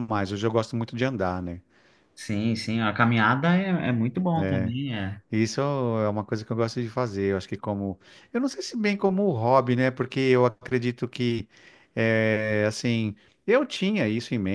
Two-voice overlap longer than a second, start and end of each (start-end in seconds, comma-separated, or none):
none